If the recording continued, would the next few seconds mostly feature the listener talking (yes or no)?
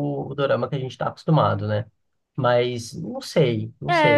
yes